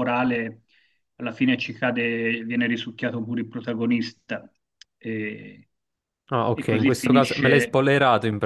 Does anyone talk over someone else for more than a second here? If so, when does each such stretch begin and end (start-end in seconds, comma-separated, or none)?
6.5-7.8